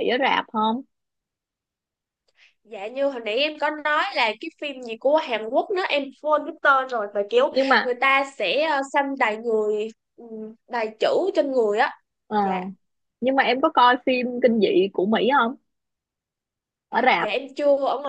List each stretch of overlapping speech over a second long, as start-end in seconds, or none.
none